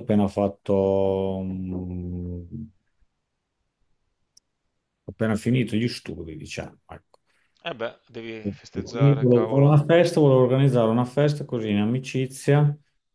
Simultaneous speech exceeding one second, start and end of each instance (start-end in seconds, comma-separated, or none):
8.4-9.8